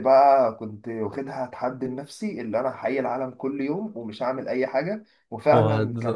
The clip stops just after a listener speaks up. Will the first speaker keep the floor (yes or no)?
yes